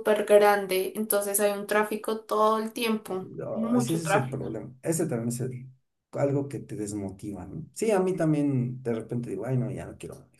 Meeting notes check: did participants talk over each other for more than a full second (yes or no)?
yes